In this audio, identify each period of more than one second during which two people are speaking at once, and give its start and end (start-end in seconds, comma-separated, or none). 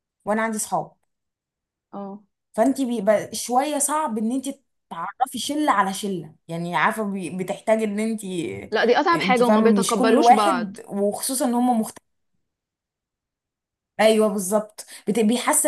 9.1-10.8